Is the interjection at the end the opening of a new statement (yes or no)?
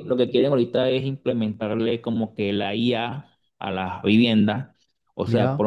no